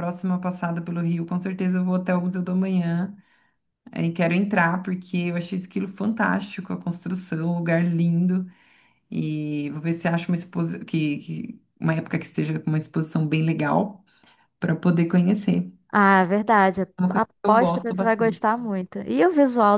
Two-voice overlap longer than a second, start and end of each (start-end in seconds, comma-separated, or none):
17.0-18.5